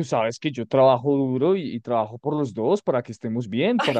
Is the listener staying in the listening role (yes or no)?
no